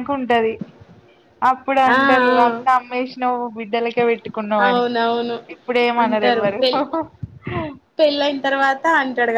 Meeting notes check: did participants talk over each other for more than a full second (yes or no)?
no